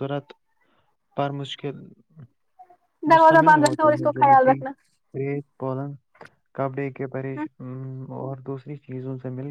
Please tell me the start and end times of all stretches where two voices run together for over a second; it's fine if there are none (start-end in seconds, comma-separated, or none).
3.1-4.6